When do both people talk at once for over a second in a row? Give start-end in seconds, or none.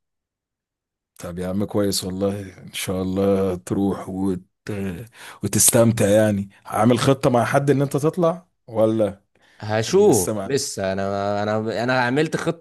none